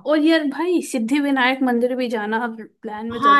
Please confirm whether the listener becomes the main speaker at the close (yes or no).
yes